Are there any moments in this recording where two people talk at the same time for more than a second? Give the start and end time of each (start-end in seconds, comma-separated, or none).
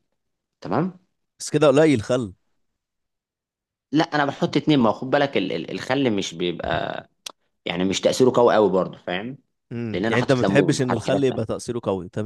9.9-11.4